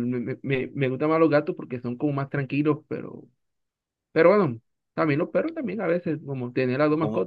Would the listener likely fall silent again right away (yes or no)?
no